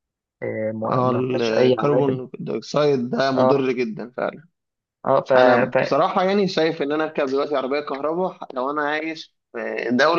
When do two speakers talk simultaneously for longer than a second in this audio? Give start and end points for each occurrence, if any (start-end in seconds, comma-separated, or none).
0.9-2.2